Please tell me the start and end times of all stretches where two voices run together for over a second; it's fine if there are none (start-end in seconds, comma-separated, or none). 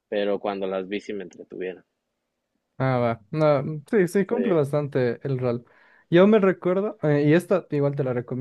none